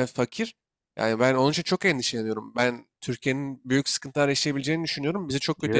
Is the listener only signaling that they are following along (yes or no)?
no